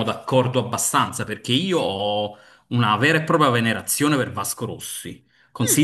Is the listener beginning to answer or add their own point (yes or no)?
no